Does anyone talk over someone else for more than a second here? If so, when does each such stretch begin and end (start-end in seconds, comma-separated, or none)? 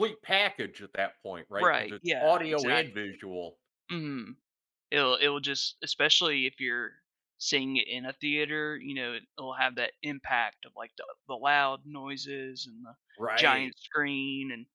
1.6-3.0